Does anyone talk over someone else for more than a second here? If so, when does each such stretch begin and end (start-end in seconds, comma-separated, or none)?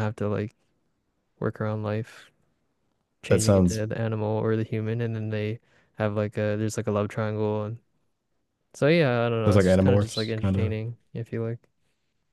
9.4-10.7